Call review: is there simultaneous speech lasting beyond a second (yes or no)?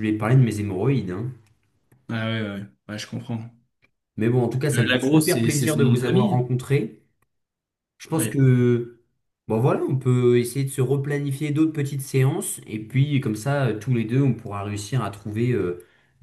yes